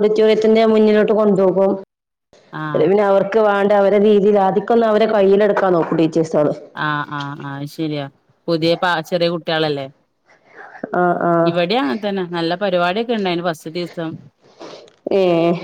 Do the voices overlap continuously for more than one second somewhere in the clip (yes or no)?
no